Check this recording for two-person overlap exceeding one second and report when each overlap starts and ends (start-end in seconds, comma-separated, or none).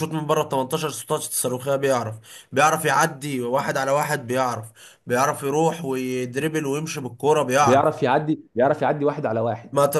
none